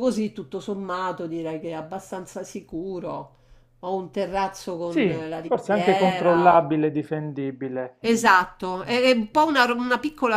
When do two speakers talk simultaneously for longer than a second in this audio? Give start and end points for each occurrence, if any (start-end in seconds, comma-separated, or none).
4.8-6.7